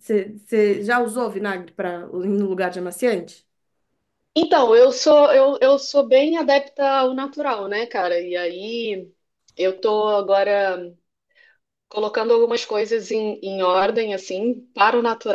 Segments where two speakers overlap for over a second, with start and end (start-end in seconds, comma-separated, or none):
none